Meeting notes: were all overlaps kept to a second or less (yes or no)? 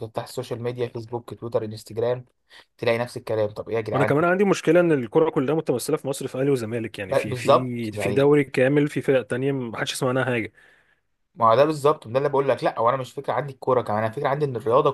no